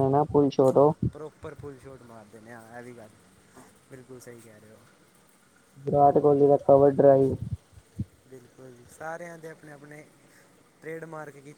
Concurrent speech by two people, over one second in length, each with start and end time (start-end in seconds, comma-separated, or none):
none